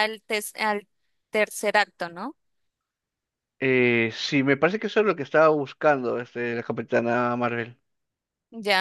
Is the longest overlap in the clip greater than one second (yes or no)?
no